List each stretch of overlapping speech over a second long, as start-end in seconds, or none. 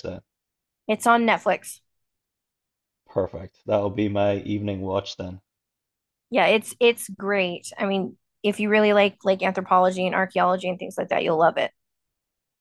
none